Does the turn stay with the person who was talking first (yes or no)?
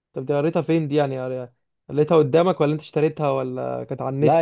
no